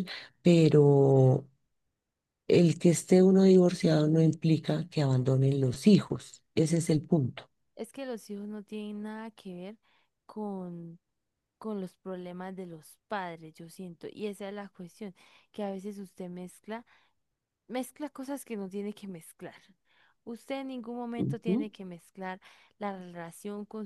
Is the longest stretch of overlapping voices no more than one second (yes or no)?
yes